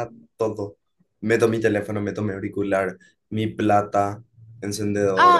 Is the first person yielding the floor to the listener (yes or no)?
yes